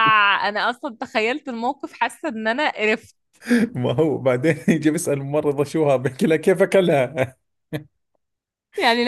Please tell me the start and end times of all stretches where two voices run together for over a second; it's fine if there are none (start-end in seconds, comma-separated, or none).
none